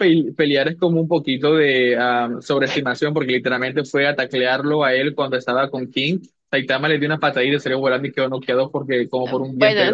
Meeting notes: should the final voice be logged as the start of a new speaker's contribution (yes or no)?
yes